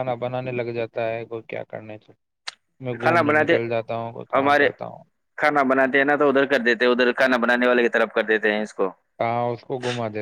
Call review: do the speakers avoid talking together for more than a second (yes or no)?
yes